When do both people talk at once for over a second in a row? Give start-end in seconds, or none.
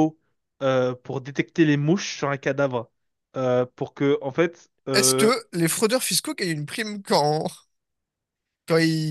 none